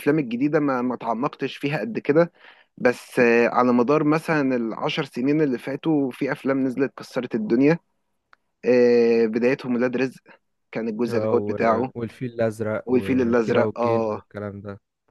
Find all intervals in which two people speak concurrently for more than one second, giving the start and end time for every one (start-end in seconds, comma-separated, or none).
12.8-14.2